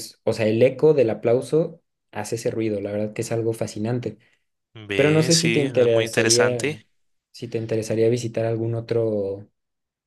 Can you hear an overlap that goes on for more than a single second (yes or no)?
yes